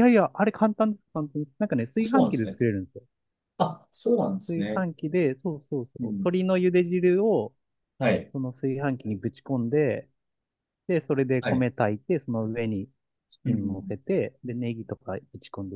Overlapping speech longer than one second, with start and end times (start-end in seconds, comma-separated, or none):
none